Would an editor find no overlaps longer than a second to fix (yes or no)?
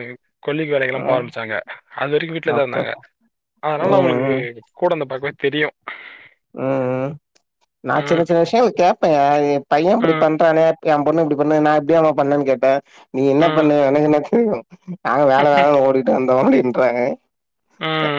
yes